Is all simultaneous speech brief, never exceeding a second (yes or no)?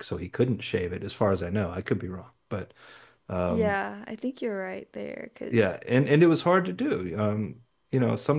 yes